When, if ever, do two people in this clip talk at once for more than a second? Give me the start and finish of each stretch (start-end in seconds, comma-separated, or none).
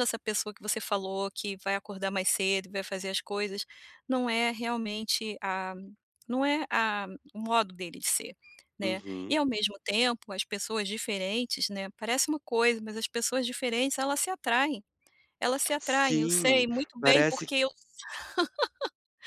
15.8-17.5